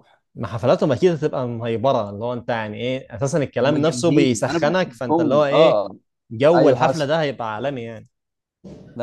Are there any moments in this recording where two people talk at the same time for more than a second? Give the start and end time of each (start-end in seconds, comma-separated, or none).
3.6-5.8